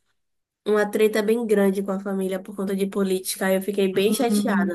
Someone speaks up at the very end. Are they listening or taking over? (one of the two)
listening